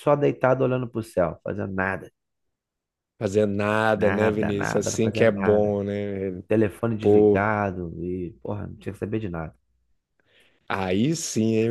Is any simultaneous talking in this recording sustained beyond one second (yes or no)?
yes